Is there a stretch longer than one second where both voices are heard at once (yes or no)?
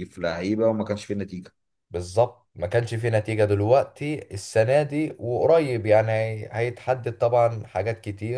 no